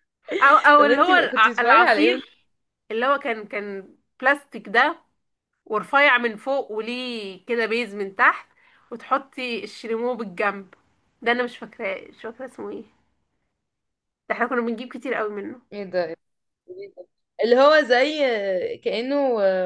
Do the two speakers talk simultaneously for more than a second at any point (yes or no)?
yes